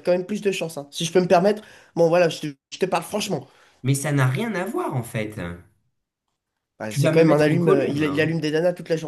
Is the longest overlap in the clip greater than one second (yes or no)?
yes